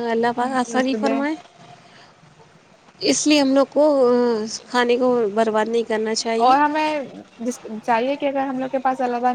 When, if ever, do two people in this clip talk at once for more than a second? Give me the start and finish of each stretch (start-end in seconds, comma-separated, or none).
none